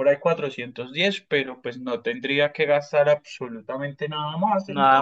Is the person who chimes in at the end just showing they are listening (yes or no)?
no